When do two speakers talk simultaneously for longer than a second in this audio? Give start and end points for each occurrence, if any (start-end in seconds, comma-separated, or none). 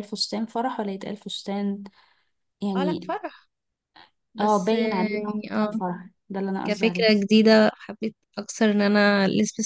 4.4-5.8